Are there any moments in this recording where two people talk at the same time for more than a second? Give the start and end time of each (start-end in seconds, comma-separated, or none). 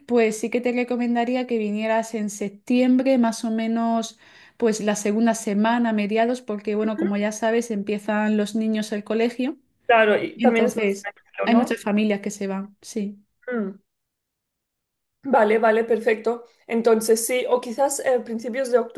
10.4-11.8